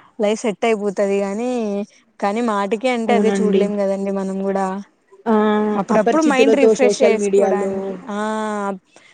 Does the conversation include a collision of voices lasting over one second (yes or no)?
yes